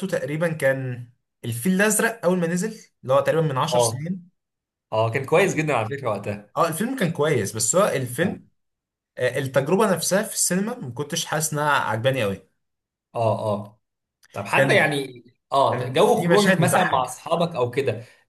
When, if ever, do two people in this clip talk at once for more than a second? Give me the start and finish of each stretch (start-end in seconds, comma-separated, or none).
15.7-17.2